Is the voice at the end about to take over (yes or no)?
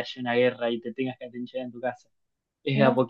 no